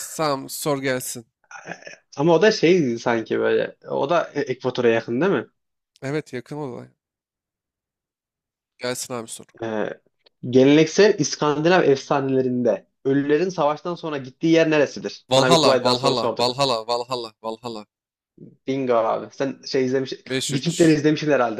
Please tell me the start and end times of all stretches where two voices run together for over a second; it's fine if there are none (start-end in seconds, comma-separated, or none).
15.3-16.6